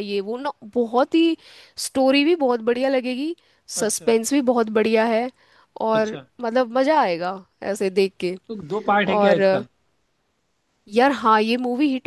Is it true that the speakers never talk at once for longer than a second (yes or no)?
yes